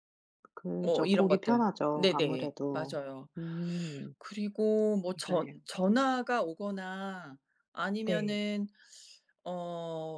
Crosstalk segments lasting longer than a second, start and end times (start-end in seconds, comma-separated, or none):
0.8-3.0